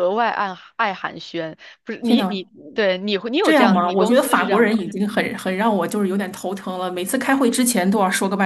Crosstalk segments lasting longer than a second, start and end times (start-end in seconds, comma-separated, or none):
3.4-4.8